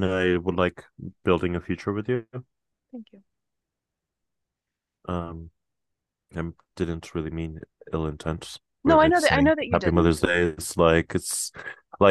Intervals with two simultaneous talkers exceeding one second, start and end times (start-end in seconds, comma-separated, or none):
8.8-10.2